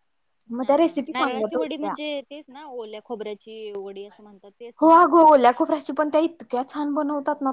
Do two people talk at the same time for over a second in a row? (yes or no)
yes